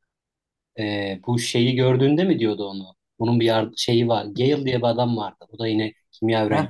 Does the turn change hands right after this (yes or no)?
yes